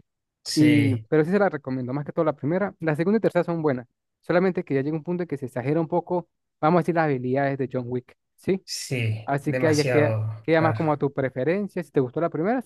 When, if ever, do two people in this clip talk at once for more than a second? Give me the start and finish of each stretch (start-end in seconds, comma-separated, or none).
9.3-11.0